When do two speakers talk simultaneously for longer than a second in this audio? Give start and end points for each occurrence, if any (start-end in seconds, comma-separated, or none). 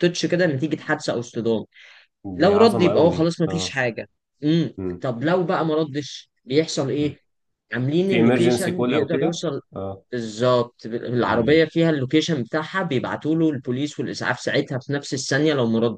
2.4-3.8, 8.1-9.6